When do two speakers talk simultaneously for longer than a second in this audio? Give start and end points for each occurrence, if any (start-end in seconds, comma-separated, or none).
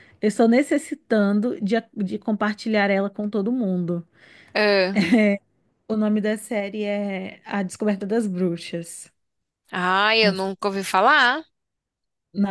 none